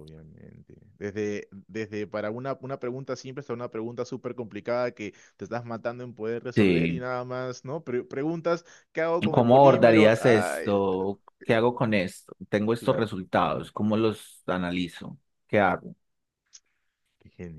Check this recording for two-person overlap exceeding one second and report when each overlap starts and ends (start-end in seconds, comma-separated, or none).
9.3-10.7